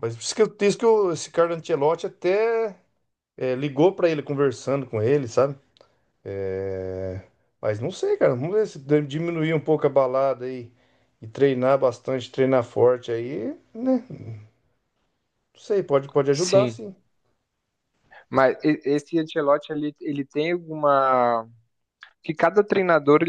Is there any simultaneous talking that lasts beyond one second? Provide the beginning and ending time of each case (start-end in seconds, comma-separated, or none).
none